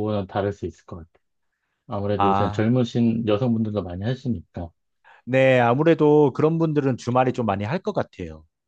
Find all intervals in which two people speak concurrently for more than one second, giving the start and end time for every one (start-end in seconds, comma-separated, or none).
none